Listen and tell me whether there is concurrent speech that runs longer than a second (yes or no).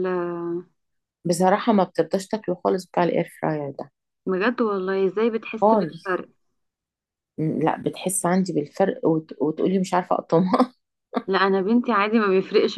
no